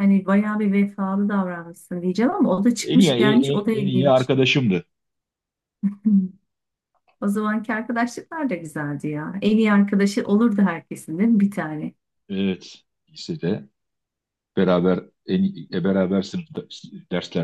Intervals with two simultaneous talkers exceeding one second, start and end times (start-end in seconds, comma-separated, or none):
2.8-4.3